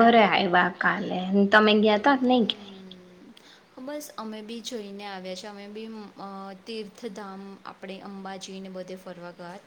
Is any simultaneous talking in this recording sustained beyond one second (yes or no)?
no